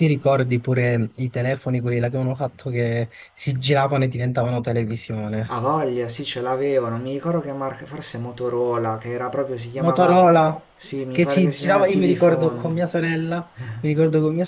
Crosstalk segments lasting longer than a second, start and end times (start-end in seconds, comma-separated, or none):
11.1-12.7